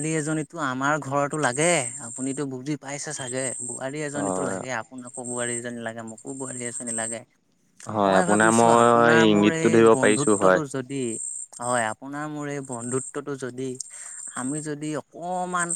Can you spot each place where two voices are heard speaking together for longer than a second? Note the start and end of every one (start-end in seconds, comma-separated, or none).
8.1-10.6